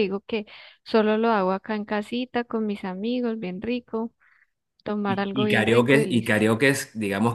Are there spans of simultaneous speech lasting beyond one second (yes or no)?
yes